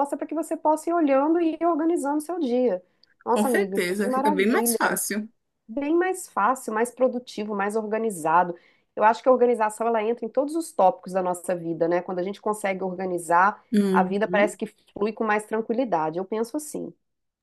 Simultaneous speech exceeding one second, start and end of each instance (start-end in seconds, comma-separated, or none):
3.3-5.0